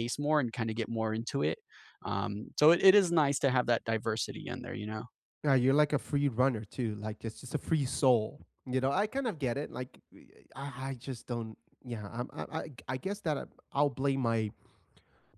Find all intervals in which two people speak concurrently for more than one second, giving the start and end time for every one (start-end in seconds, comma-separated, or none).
none